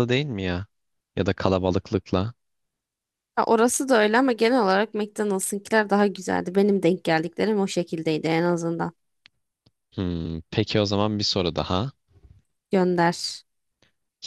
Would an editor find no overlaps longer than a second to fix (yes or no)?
yes